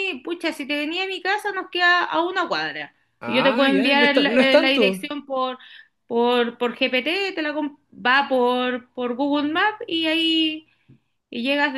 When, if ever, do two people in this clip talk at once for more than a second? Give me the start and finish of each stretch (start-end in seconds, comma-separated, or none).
3.2-5.1